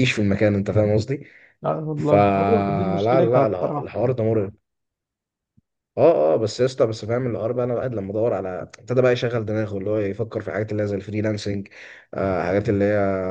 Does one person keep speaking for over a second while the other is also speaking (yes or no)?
yes